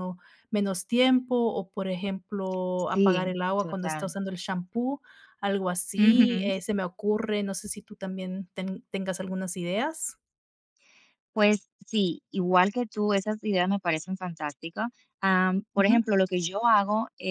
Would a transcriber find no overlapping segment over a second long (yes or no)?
no